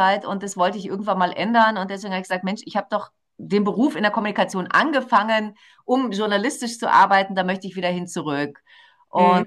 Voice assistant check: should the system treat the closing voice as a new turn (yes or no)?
yes